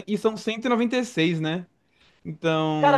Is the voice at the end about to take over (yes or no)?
yes